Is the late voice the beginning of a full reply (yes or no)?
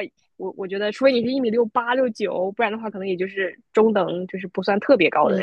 yes